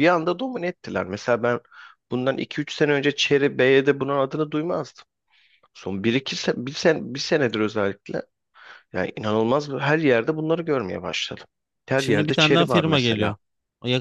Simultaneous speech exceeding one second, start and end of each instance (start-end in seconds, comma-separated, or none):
12.0-13.4